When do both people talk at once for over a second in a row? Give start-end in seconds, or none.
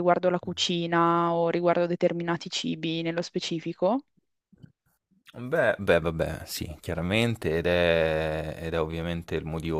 none